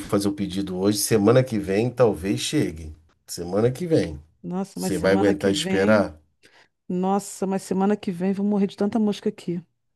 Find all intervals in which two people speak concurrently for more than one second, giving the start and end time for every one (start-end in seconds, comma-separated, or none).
4.7-6.1